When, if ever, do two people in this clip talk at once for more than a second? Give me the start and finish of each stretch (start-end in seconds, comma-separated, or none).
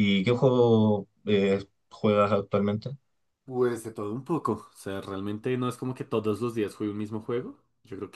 none